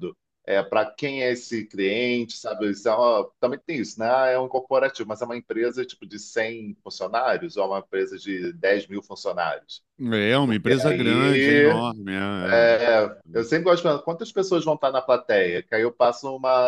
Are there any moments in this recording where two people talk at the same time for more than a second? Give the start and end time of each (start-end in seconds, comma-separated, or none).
10.4-11.8